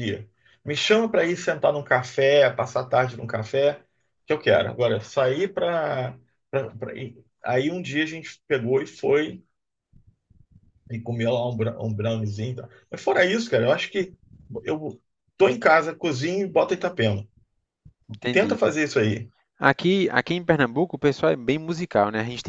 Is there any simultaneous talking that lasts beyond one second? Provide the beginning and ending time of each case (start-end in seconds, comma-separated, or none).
none